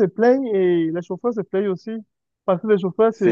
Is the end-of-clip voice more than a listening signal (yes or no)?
no